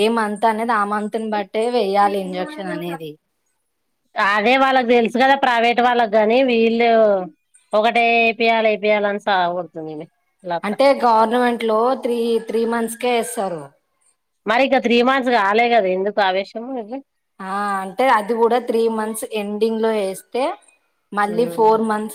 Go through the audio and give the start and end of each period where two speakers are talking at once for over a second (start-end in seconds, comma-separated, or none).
none